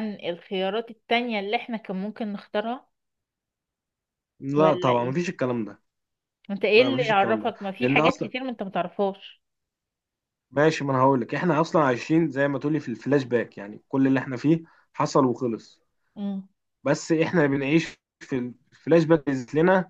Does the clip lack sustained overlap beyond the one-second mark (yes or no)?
no